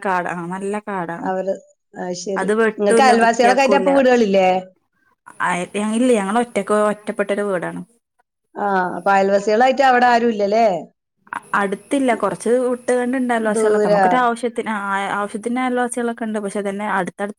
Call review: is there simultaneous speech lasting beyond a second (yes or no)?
yes